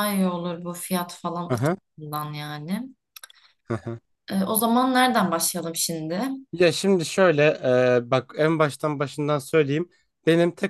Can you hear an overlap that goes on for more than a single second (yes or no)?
no